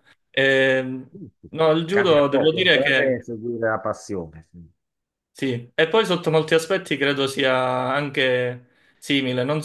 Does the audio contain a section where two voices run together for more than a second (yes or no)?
yes